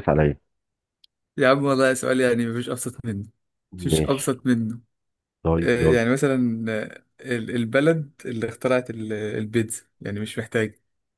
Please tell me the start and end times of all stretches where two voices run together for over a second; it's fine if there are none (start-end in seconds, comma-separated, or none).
none